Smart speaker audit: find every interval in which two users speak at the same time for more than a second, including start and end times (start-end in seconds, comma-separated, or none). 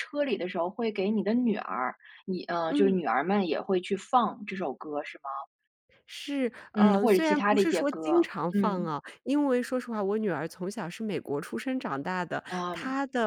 6.7-8.9